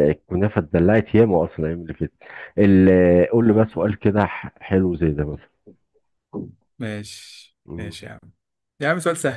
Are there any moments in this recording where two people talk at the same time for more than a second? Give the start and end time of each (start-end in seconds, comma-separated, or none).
none